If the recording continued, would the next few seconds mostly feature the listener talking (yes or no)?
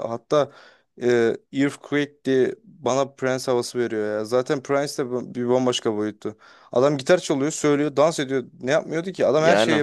yes